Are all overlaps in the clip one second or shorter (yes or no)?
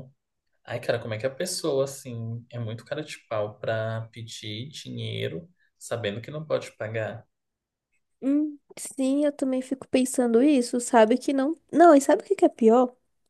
yes